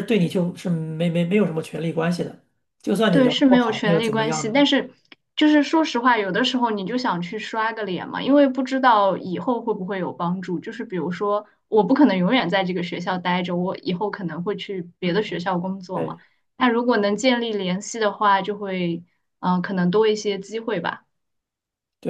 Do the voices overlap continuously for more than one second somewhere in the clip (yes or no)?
yes